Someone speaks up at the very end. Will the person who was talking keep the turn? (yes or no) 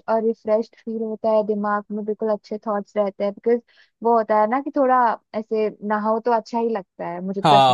no